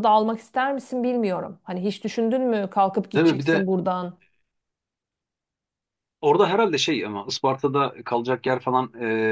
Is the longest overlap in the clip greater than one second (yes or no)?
no